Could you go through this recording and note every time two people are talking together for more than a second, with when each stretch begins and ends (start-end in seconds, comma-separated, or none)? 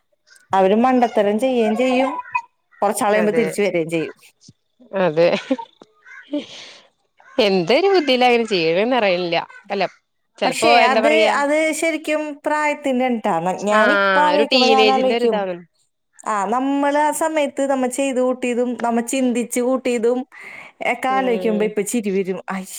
13.8-15.4